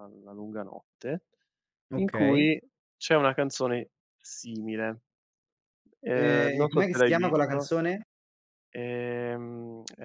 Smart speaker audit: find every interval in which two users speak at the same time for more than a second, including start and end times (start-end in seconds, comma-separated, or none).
6.1-7.7